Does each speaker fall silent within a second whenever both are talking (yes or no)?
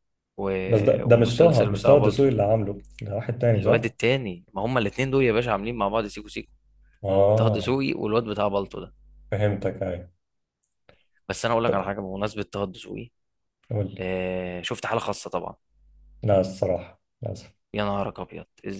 no